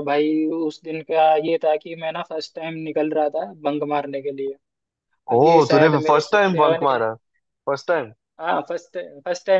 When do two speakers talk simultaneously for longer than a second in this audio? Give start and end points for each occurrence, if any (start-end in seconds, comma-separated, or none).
5.4-7.1